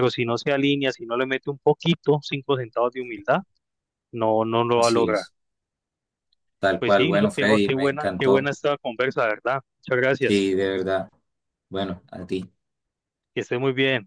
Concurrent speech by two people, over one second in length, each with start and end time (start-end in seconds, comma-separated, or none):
6.8-8.5